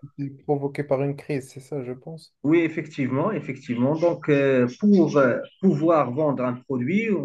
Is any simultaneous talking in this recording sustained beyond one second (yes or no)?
no